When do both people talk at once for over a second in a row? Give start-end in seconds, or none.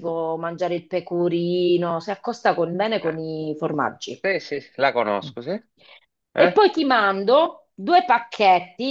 none